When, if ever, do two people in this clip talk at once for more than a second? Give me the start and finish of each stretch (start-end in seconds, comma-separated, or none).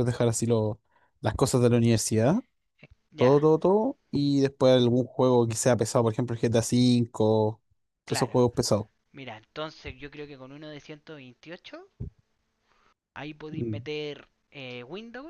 none